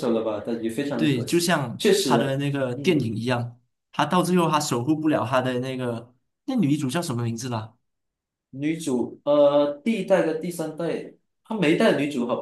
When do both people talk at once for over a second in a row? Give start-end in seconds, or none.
0.9-3.1